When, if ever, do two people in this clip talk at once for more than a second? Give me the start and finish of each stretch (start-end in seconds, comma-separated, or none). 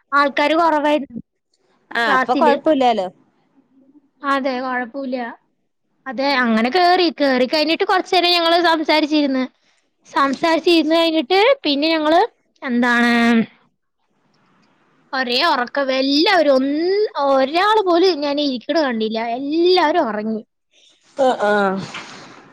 none